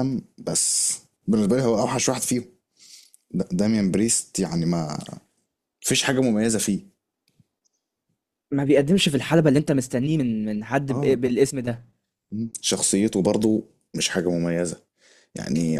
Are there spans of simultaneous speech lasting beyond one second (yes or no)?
no